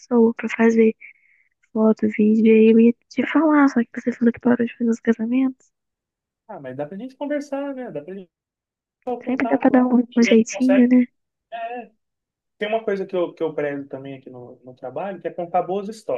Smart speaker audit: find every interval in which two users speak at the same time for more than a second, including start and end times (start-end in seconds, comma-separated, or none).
9.2-10.9